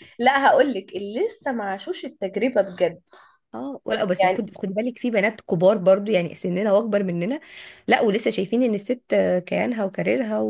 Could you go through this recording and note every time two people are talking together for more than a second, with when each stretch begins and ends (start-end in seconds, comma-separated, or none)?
none